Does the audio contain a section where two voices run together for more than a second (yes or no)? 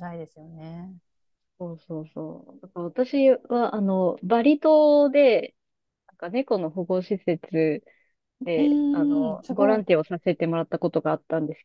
yes